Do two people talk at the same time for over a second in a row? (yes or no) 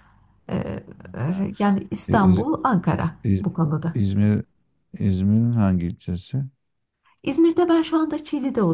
no